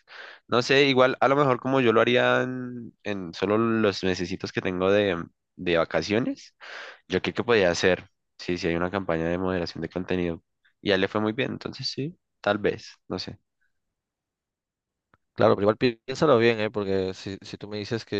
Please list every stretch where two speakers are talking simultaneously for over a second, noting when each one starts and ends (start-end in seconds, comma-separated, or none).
none